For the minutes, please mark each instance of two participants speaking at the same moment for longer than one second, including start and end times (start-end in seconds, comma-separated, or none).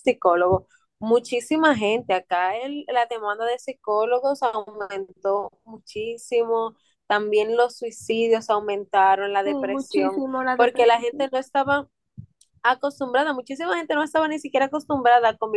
9.4-11.1